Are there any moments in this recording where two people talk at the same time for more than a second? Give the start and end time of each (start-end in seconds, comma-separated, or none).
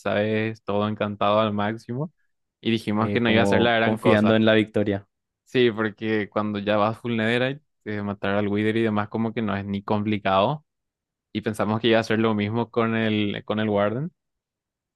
2.9-4.4